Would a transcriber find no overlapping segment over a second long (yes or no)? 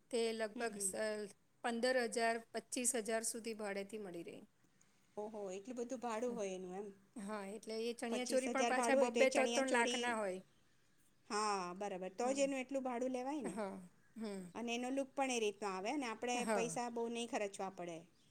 no